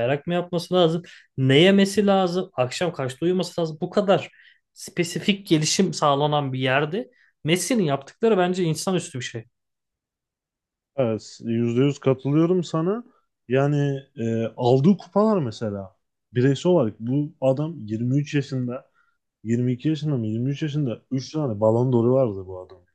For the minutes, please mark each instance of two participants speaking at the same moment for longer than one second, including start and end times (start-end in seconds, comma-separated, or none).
none